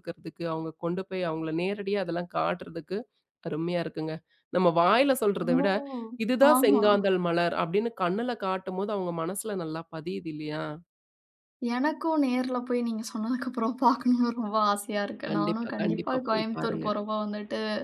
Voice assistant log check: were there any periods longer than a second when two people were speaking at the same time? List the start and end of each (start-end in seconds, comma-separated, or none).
15.3-16.9